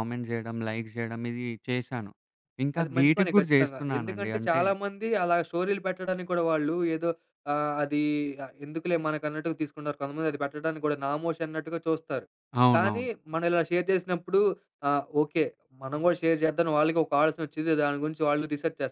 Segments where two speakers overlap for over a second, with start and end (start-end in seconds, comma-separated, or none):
2.8-4.6